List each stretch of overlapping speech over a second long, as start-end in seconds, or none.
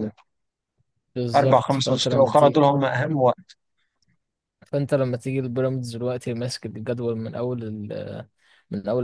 1.3-2.6